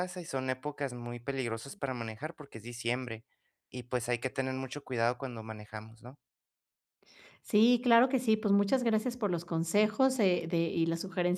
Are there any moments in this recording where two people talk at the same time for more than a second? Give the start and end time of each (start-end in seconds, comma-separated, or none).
none